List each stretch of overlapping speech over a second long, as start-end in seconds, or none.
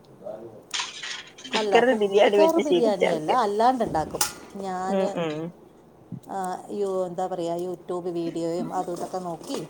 2.0-3.4